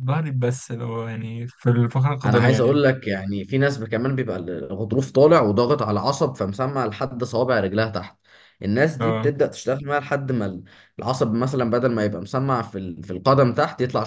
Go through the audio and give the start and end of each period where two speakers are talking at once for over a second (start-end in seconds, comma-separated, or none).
none